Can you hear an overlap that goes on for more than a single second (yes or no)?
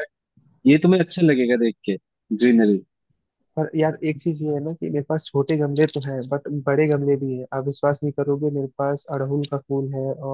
no